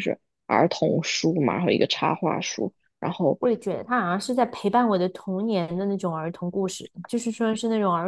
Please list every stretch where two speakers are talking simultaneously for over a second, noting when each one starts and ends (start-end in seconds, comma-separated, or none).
none